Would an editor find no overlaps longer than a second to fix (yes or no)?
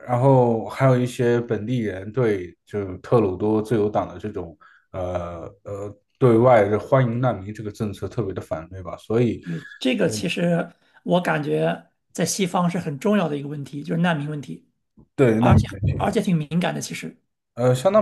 yes